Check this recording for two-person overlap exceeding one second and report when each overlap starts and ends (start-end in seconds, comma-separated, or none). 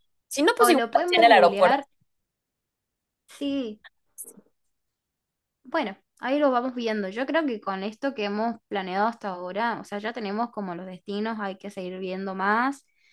0.6-1.8